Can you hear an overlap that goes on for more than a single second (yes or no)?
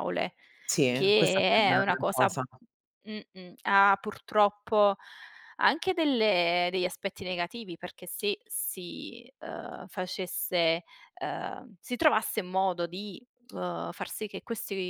yes